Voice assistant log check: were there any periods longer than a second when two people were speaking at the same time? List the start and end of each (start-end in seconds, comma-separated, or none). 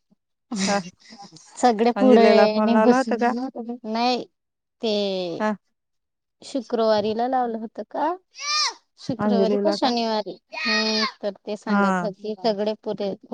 2.0-3.2